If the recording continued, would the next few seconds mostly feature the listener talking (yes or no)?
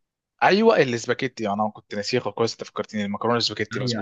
yes